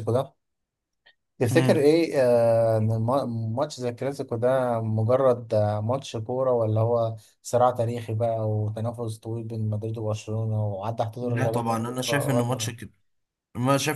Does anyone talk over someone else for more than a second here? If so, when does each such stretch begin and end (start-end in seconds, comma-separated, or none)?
11.2-12.7